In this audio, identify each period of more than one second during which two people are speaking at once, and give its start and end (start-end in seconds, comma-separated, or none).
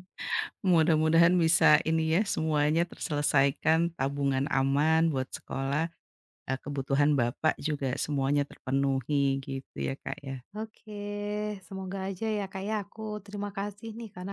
none